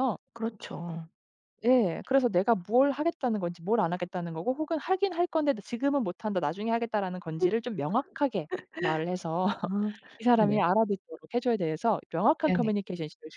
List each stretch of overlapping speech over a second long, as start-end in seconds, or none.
none